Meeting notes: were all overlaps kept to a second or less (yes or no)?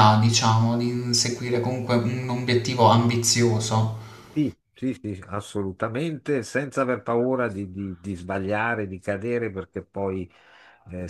yes